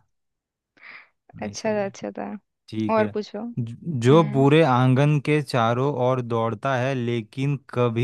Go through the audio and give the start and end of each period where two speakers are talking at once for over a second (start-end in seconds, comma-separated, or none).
none